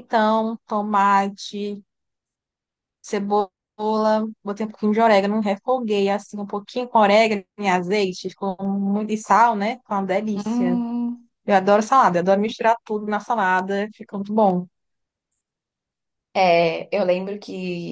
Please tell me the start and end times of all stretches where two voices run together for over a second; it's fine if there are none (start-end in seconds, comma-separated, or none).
none